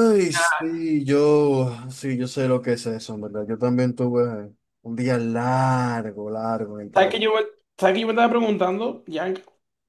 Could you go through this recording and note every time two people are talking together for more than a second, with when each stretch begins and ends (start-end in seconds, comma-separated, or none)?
none